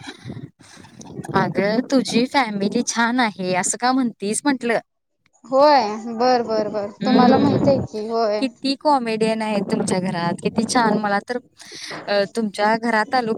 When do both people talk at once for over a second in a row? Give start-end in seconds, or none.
none